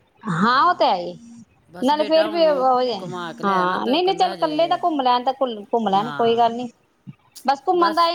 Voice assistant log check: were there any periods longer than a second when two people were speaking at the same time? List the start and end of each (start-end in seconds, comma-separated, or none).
3.4-4.8